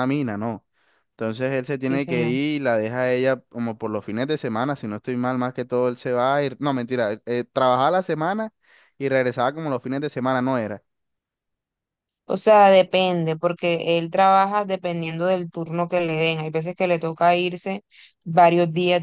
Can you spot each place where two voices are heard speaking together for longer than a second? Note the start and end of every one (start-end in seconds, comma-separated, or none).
none